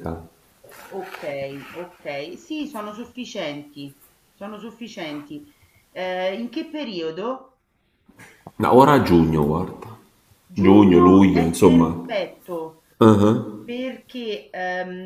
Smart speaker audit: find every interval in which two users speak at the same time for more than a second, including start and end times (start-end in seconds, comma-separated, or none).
10.5-12.0